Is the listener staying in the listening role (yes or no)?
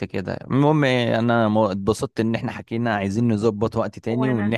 yes